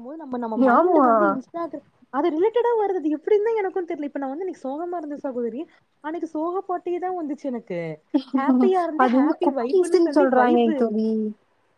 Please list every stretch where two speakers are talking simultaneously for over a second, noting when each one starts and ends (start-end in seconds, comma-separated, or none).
9.0-10.8